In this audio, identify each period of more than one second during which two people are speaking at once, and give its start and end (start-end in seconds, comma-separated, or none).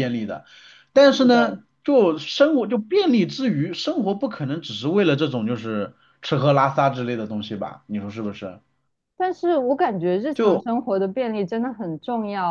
none